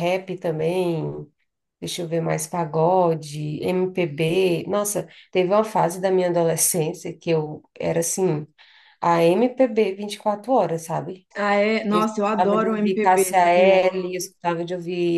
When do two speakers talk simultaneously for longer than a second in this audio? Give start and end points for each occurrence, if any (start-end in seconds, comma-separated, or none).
11.9-13.8